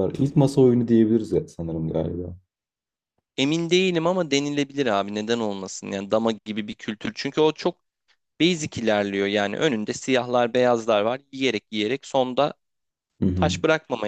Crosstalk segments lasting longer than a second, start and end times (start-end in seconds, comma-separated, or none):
none